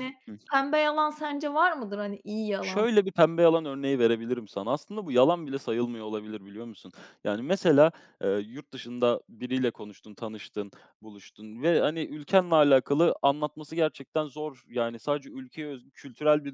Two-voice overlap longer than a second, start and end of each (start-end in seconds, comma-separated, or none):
none